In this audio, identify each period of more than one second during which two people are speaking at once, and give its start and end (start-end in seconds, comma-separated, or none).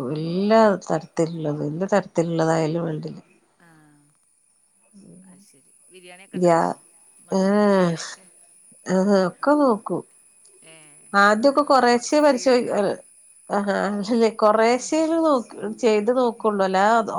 11.2-12.9